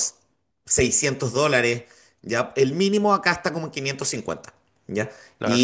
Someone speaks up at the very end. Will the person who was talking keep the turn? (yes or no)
yes